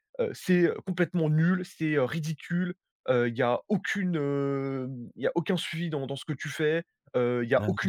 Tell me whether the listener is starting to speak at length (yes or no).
no